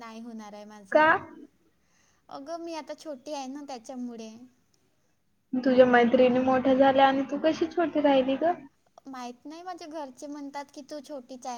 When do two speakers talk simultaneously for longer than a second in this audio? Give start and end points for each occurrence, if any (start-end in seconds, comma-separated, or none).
none